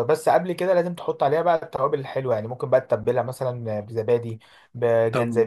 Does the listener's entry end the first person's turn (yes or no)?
yes